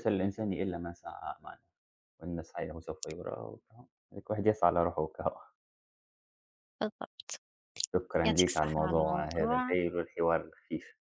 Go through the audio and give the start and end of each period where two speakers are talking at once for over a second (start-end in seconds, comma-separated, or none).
8.2-9.8